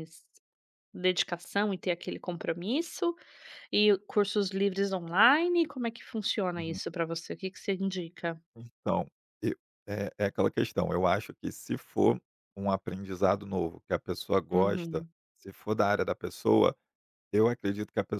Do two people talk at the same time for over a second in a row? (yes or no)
no